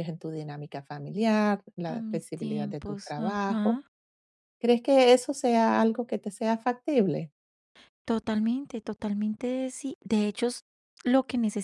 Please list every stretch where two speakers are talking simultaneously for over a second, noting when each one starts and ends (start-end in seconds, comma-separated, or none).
1.8-3.8